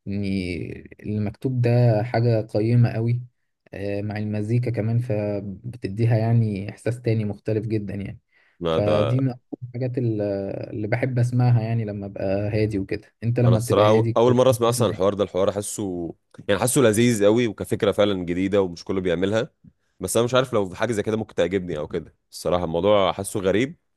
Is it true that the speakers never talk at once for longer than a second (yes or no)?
no